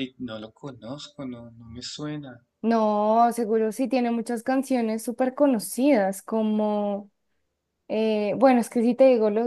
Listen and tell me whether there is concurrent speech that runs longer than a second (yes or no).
no